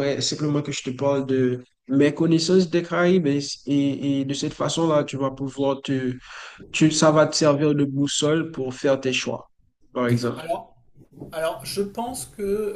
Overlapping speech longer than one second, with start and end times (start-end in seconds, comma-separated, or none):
none